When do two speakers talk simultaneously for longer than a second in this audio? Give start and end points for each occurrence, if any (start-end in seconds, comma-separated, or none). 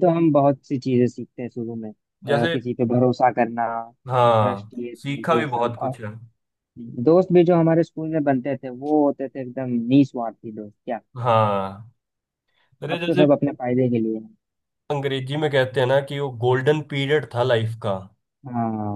4.3-5.9